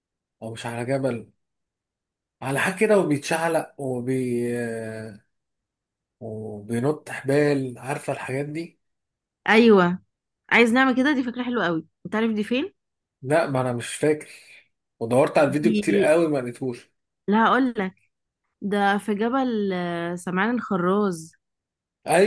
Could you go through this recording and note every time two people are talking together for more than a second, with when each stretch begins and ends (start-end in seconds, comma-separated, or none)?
none